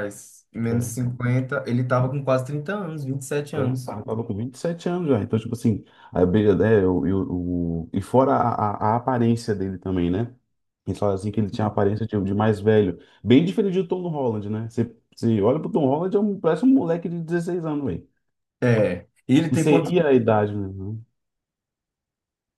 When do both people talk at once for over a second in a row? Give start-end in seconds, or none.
none